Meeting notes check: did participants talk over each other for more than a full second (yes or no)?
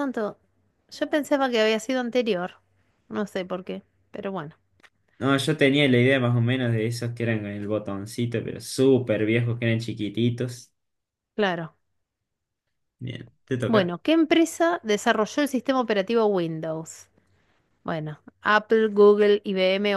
no